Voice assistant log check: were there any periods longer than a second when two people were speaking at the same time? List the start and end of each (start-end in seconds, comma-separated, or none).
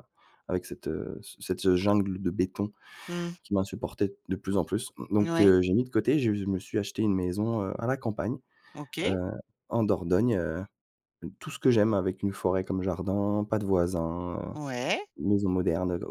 none